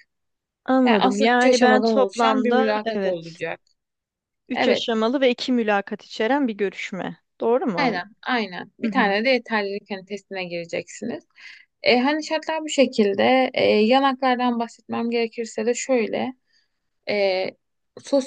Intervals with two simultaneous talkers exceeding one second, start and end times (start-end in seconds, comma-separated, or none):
0.9-3.4